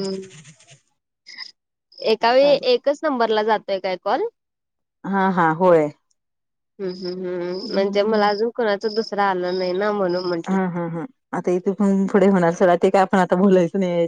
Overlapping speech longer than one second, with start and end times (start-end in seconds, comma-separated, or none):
none